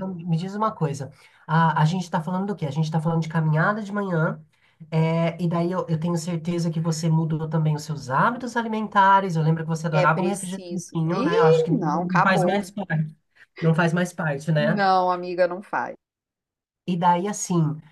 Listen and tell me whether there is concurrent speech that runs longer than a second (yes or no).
yes